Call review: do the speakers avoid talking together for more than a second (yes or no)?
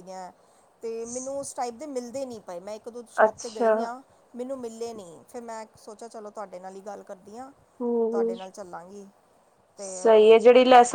yes